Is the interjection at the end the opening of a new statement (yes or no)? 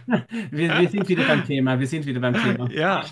yes